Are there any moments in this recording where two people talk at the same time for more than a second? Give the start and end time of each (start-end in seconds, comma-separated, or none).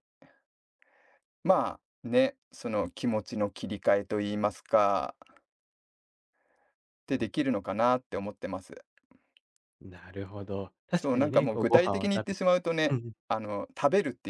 10.9-13.1